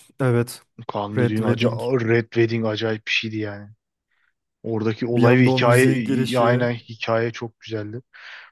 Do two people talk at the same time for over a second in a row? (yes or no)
yes